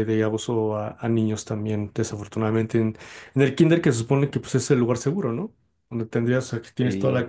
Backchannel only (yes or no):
yes